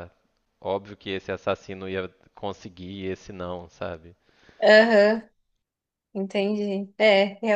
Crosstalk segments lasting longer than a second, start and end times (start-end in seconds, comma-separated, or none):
none